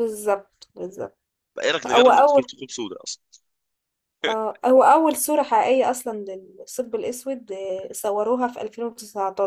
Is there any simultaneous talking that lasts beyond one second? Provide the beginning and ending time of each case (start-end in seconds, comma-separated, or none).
none